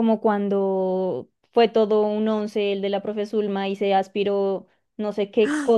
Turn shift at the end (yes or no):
no